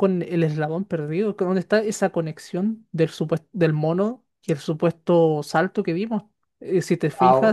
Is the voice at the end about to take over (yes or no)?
no